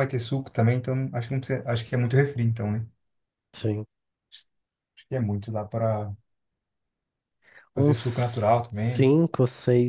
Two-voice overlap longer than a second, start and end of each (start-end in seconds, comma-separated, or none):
7.7-9.1